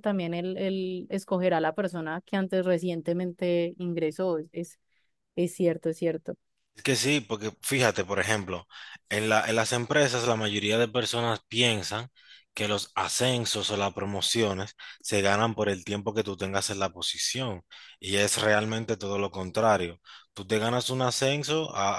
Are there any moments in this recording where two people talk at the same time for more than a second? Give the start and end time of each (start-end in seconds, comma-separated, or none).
none